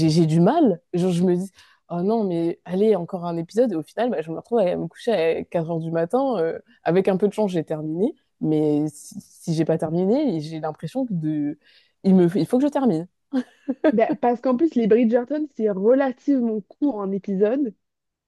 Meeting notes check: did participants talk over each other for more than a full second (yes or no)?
no